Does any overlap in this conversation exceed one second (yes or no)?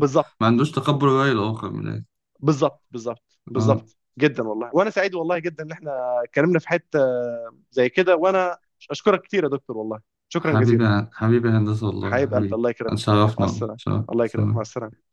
yes